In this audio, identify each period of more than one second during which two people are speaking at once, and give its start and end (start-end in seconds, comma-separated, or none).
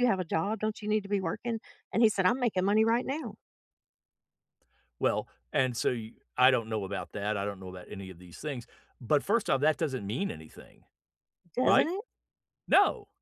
none